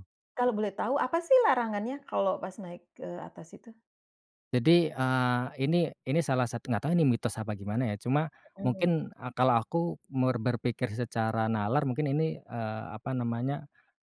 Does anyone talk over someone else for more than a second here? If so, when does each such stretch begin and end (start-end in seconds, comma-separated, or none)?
none